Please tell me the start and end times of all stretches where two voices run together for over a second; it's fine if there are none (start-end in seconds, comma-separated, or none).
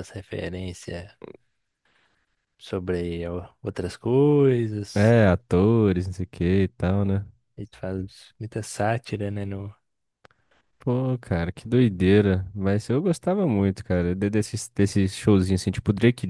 none